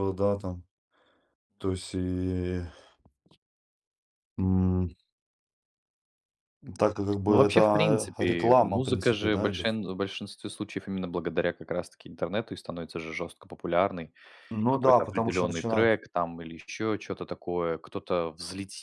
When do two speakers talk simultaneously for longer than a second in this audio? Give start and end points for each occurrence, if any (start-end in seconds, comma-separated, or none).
7.3-9.7, 14.7-15.9